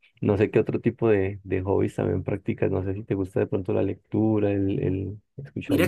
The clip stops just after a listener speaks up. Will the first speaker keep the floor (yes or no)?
no